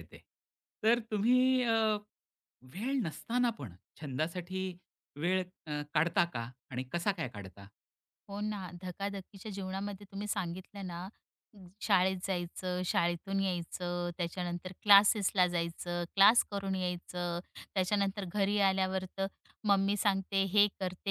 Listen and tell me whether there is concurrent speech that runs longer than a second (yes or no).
no